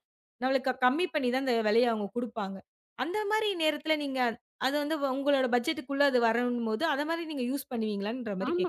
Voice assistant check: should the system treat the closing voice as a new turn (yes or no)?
yes